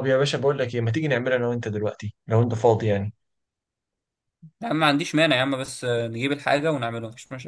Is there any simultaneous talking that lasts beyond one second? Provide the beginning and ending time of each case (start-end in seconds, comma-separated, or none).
none